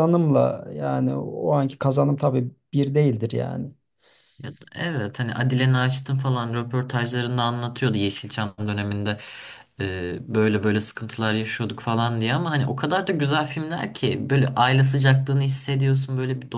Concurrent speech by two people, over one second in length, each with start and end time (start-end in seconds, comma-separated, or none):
none